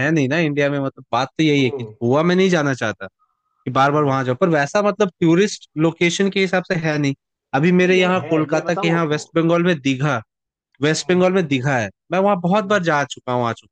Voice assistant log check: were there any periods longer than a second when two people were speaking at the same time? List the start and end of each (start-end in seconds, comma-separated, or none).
7.8-9.2